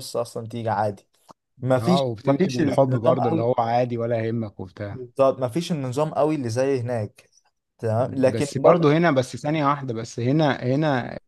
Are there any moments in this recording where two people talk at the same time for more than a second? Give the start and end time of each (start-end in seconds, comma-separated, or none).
1.8-3.5